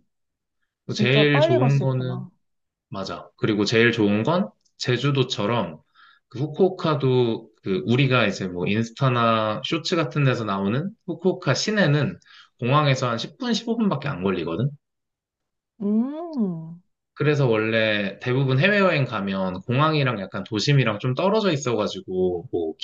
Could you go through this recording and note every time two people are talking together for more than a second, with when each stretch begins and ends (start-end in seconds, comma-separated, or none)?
0.9-2.2